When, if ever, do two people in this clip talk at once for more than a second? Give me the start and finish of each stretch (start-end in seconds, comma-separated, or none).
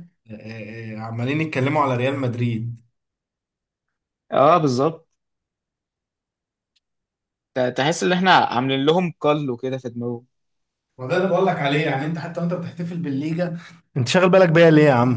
none